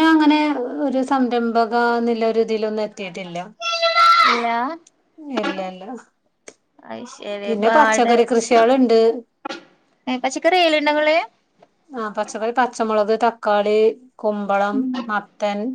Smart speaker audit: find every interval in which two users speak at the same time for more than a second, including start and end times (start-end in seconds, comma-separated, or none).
none